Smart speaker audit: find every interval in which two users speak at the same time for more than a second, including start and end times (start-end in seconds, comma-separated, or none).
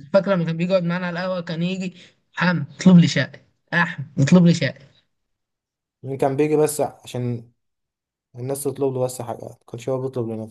none